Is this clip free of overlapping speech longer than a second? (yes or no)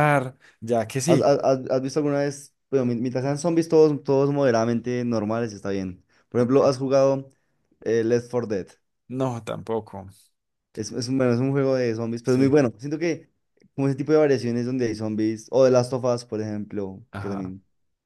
yes